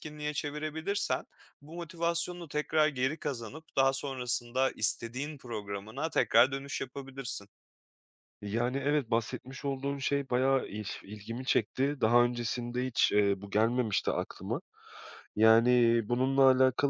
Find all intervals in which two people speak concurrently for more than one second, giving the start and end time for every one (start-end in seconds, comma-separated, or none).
none